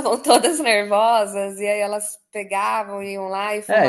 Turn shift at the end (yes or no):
yes